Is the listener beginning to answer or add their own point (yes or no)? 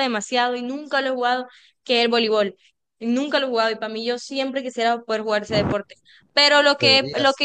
no